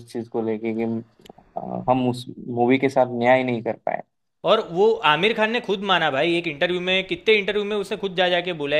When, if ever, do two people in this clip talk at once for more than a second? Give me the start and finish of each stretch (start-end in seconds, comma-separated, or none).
none